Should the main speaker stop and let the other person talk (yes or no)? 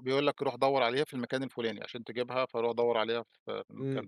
yes